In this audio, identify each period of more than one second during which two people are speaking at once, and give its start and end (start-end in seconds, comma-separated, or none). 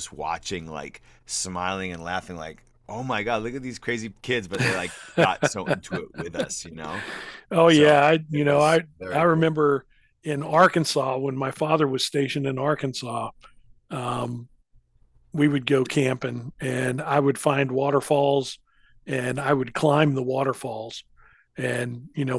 7.7-9.5